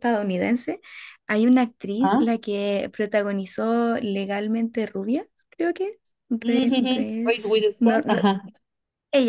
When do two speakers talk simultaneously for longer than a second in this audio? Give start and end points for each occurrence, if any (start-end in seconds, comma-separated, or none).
6.4-8.2